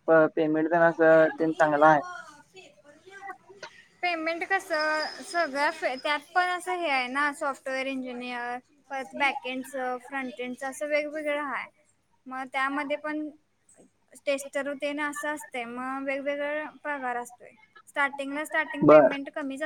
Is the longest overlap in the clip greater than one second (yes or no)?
no